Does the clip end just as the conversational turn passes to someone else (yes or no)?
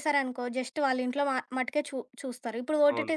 no